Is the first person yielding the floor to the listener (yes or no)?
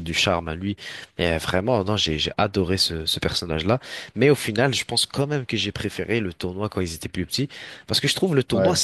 no